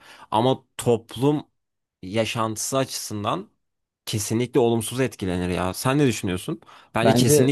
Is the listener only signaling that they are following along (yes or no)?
yes